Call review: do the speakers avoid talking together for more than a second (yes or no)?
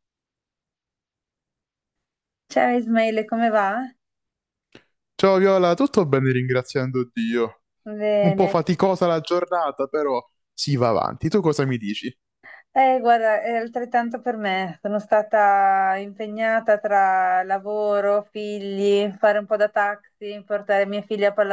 yes